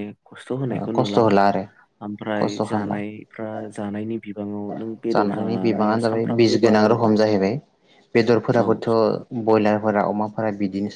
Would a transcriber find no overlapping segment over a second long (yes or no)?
no